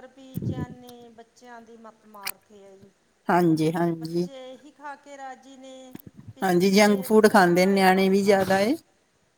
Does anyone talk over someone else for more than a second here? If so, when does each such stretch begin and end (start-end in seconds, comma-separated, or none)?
6.4-8.6